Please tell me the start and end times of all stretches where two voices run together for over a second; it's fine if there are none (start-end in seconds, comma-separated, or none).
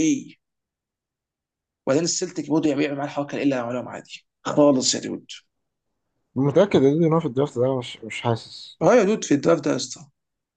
none